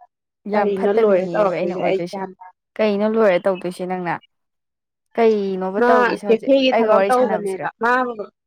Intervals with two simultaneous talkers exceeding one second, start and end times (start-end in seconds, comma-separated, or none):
0.5-2.0